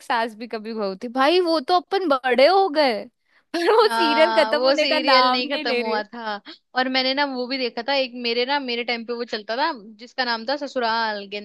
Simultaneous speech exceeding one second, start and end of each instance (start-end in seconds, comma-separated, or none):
3.8-6.0